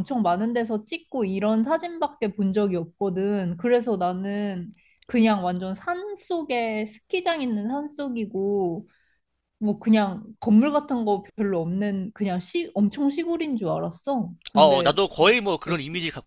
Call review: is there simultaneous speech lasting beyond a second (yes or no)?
no